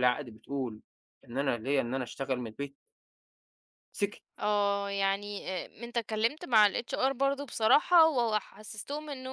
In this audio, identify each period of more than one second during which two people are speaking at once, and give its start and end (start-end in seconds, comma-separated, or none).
none